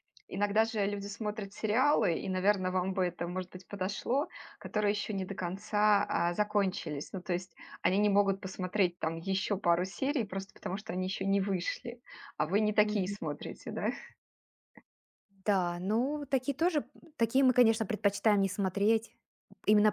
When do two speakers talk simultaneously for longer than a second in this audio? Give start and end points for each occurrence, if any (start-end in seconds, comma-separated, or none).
none